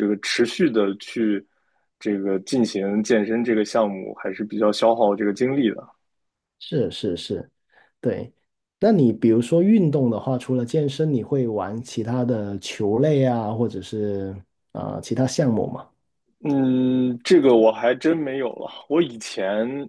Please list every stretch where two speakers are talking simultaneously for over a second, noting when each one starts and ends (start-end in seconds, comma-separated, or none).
none